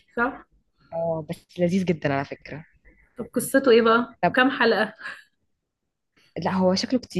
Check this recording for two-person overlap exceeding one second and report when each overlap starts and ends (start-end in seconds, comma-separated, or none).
none